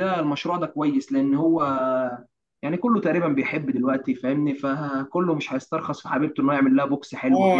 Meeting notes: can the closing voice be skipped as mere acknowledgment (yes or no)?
no